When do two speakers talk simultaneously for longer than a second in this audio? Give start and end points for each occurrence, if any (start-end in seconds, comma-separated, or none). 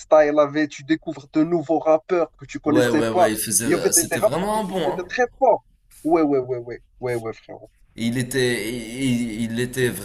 2.6-5.0